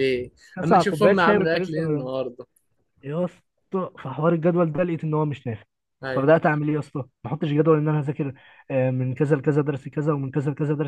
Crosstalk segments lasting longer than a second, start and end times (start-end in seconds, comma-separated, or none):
0.6-1.8